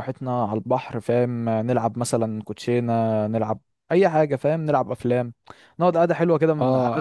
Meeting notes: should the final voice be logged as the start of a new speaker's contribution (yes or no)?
yes